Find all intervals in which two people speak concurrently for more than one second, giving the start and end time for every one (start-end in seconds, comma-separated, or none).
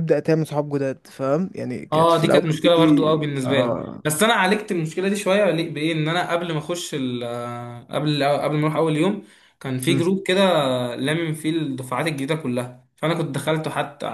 1.9-4.0